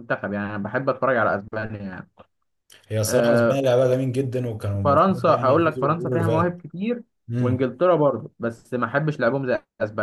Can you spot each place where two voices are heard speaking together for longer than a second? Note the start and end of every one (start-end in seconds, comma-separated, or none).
4.8-6.5